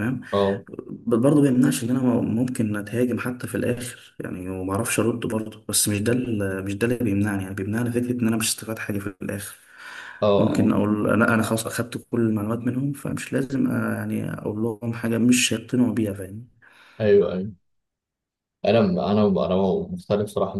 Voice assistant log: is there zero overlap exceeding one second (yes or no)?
yes